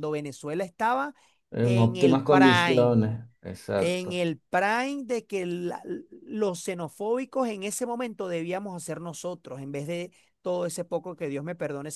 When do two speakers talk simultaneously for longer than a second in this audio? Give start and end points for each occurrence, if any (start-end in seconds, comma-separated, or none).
1.6-3.0